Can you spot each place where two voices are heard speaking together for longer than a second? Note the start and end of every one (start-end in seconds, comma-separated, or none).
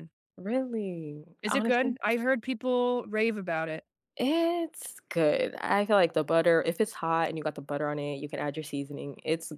none